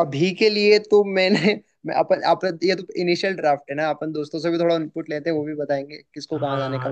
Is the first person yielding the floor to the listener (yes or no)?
yes